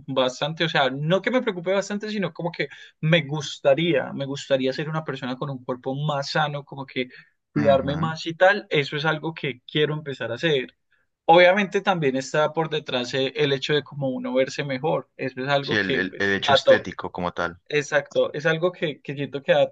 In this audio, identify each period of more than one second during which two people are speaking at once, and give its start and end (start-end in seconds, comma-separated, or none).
15.6-16.9